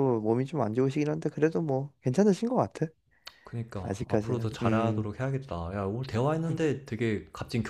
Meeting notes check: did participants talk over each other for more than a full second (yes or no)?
yes